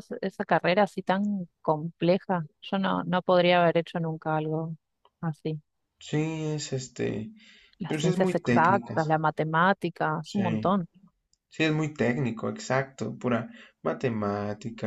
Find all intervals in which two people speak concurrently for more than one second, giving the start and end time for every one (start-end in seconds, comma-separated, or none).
7.9-9.2